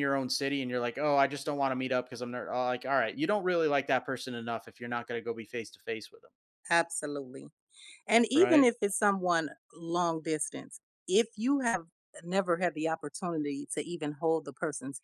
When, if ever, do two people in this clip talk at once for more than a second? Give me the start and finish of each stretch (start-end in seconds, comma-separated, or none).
none